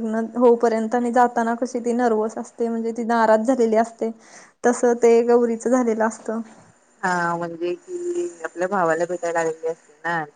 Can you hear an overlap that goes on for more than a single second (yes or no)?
no